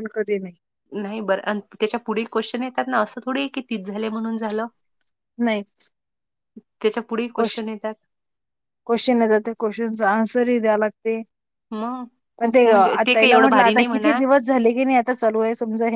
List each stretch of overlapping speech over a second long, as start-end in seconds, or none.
12.4-14.2